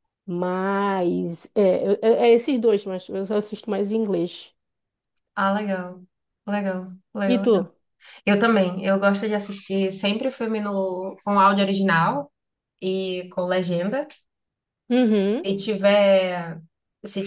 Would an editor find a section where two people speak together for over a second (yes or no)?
no